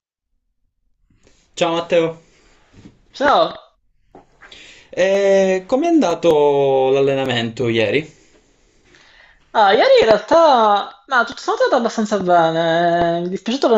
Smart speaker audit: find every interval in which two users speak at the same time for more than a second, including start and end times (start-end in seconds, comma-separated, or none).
none